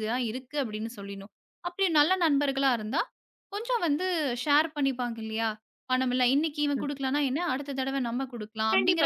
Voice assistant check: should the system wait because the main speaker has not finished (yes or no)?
no